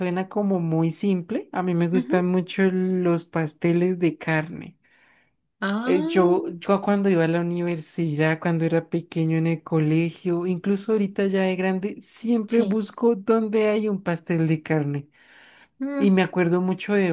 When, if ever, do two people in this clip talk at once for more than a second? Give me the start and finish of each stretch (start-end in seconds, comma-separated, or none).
none